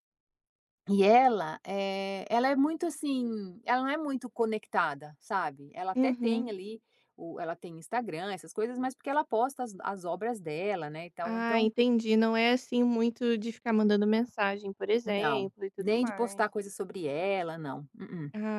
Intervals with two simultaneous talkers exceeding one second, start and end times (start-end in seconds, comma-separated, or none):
15.0-16.4